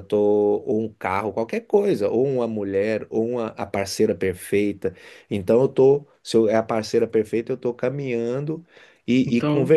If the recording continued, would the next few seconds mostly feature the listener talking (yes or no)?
no